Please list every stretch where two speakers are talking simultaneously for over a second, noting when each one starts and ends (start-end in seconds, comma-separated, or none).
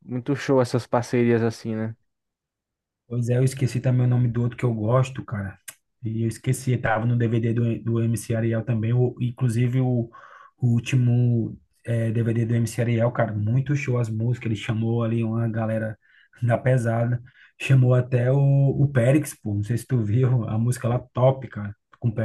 none